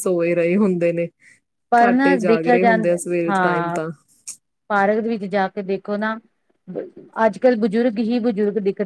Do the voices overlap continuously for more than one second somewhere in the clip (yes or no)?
yes